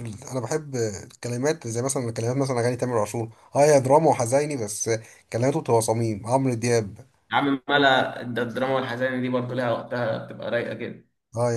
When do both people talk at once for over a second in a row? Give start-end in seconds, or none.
none